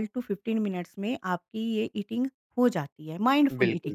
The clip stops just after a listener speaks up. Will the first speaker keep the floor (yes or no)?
no